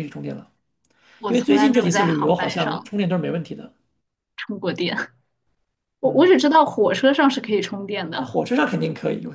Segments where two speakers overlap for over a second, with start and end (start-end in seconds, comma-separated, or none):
1.3-3.0